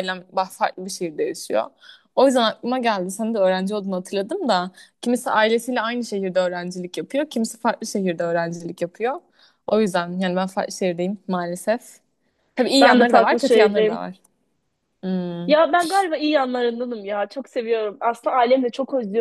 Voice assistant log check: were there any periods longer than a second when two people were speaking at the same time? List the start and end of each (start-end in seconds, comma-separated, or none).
12.8-14.1